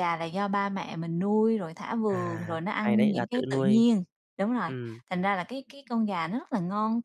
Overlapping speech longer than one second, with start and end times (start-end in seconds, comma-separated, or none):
2.1-3.8